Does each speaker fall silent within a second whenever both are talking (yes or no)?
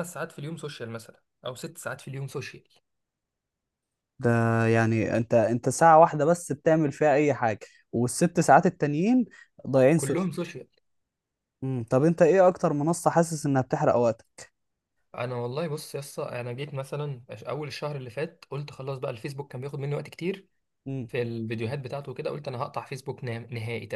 yes